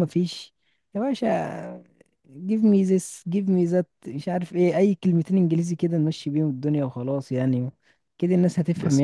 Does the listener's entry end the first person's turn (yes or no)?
yes